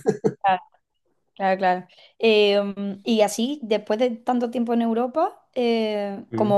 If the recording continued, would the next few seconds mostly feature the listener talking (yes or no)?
no